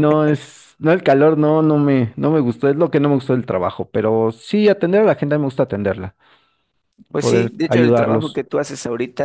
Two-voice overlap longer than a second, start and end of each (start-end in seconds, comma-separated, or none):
7.2-8.4